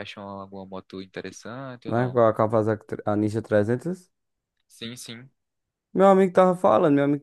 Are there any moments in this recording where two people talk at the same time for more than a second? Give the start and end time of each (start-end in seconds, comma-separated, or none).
none